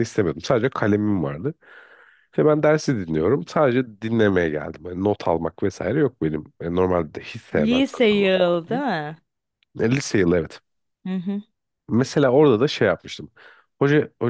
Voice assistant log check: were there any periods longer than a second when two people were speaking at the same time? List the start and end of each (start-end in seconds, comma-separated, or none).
7.5-8.8